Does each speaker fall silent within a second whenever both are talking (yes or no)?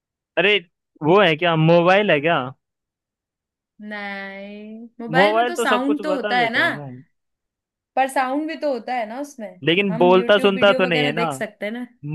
no